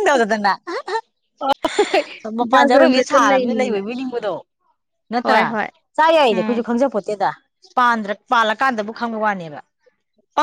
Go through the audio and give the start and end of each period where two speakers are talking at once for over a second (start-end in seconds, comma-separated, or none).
2.5-3.8